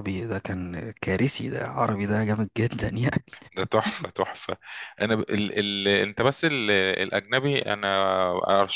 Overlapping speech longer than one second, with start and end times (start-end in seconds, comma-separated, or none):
none